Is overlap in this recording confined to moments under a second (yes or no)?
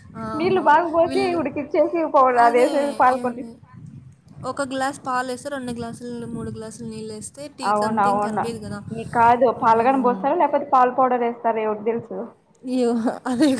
yes